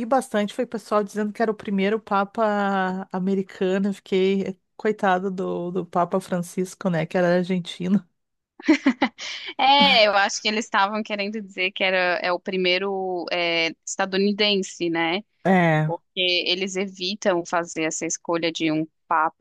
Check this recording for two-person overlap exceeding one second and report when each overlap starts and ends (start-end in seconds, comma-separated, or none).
none